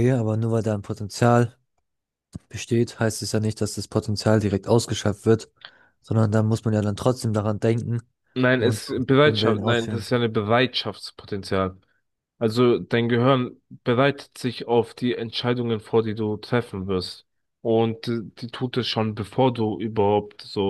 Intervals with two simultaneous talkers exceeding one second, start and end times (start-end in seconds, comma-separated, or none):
8.6-10.1